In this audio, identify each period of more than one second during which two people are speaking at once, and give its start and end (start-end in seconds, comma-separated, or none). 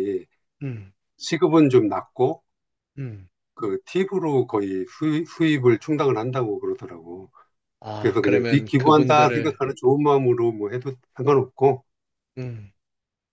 8.0-9.6